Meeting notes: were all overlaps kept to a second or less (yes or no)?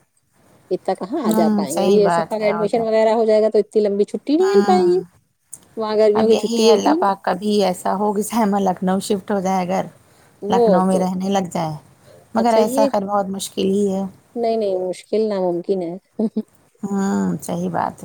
no